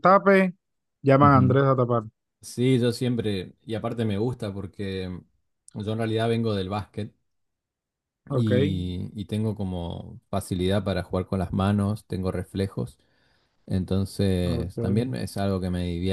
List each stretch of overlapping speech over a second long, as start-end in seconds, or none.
none